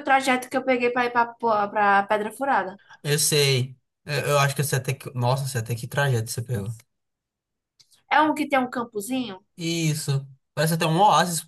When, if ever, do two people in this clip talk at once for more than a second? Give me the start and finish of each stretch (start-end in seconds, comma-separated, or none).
none